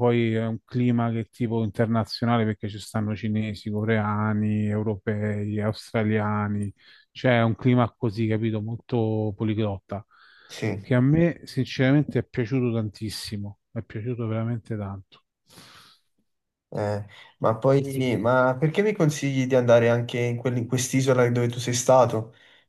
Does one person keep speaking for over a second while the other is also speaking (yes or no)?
no